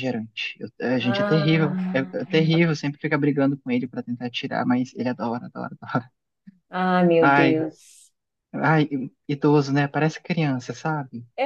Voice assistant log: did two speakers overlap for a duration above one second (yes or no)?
yes